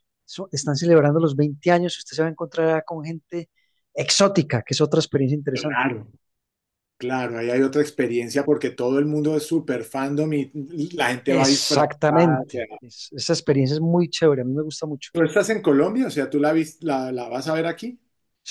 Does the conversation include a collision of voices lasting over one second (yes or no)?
yes